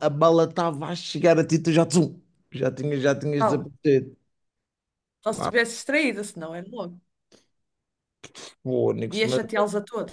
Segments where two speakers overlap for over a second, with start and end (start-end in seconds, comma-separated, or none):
none